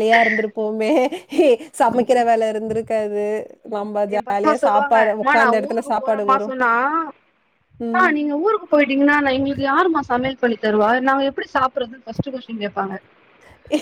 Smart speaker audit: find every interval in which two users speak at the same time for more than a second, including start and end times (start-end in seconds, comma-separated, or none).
4.1-6.5